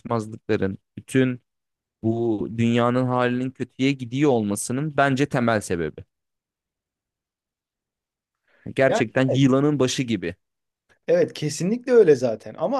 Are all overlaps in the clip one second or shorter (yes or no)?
yes